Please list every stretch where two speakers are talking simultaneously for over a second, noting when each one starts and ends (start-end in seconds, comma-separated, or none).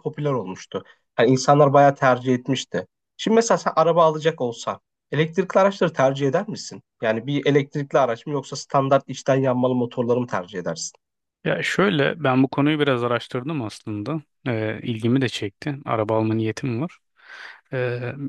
none